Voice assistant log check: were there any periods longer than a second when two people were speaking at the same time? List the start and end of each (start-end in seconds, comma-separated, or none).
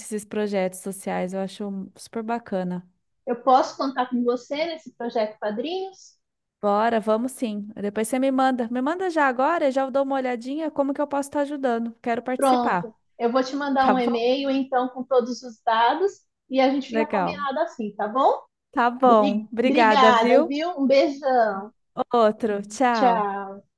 19.0-20.5